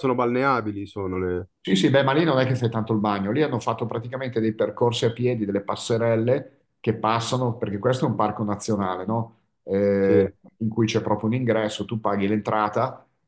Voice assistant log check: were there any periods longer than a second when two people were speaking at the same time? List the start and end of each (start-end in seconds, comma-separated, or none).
none